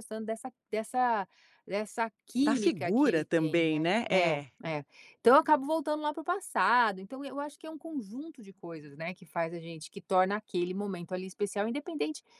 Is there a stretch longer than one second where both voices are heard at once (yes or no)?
yes